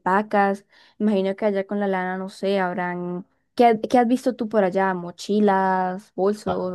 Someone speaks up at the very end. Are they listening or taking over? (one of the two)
taking over